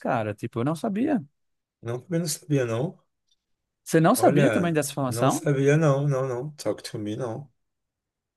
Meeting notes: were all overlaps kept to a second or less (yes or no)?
no